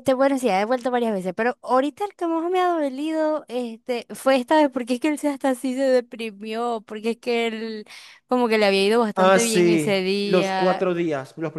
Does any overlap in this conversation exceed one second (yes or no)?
yes